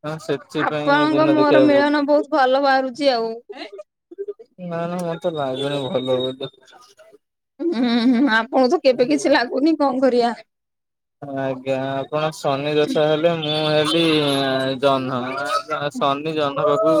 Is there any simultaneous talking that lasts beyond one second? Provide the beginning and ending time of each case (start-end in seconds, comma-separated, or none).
0.7-2.1